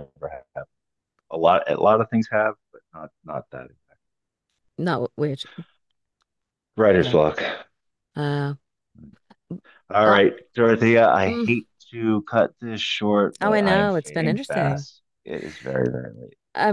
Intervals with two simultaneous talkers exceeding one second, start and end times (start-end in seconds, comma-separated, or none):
13.4-14.9